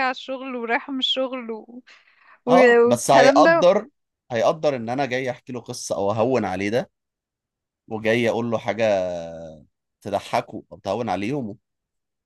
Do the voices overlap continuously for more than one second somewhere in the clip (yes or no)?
yes